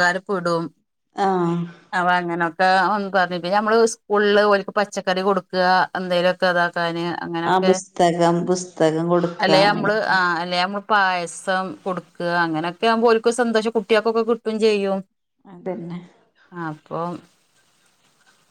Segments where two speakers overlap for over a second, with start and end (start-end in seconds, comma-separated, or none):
none